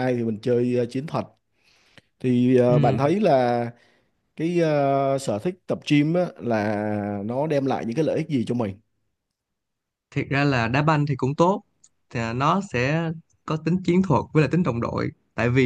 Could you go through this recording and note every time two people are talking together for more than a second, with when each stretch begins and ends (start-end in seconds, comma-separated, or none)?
none